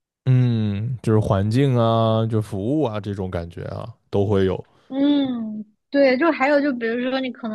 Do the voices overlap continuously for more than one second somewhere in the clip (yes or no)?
no